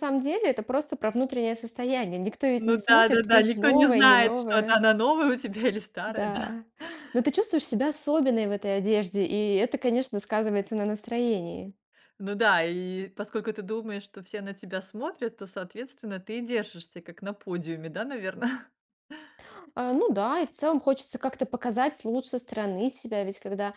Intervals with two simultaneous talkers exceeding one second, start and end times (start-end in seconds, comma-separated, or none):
2.6-4.8